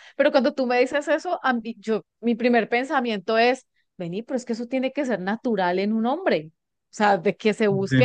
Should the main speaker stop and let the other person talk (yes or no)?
no